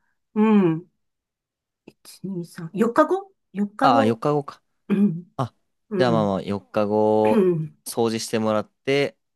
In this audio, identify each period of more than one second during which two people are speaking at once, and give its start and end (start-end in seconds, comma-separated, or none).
none